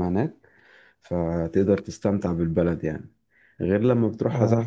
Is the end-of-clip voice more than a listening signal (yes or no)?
no